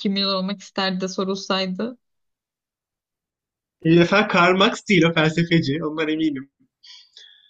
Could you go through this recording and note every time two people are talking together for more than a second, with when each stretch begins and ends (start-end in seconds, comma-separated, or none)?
none